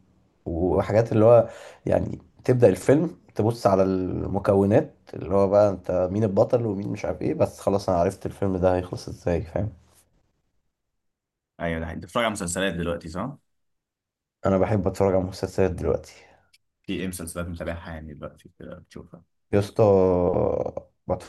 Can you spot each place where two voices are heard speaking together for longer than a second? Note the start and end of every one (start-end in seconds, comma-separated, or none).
none